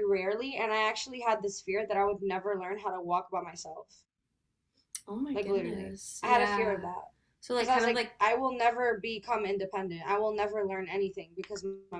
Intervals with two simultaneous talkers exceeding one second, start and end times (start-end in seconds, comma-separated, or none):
5.3-6.8